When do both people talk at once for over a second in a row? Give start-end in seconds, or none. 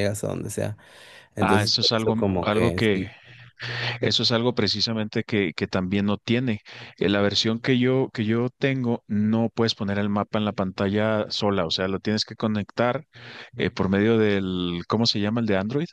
1.4-3.1